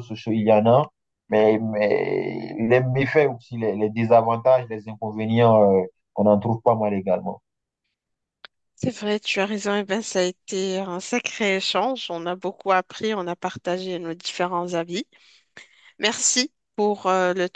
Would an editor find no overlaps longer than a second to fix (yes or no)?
yes